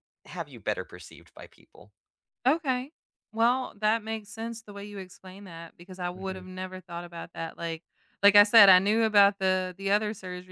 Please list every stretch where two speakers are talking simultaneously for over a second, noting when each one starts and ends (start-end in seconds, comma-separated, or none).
none